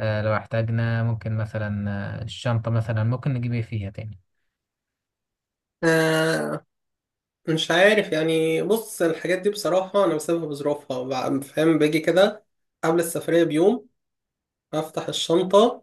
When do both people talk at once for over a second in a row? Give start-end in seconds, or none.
none